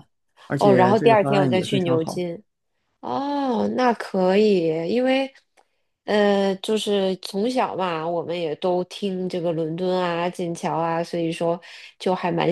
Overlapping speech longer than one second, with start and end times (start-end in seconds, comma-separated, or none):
0.6-2.3